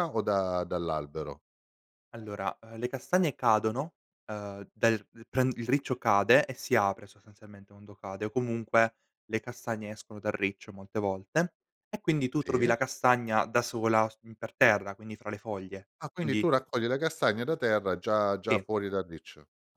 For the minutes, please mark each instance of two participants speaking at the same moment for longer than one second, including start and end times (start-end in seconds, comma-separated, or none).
none